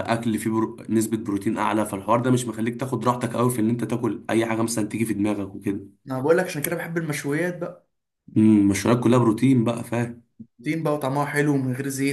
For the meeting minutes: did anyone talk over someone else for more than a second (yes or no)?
no